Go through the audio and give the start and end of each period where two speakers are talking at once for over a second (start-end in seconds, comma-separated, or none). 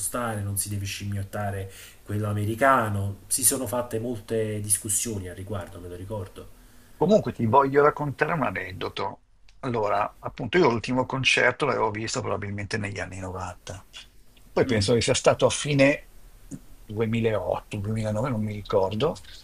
none